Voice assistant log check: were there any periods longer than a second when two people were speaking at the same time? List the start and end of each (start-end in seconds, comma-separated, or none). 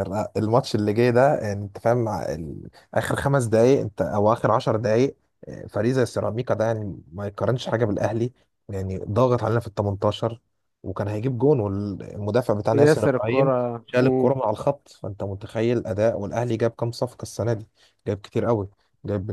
12.7-14.4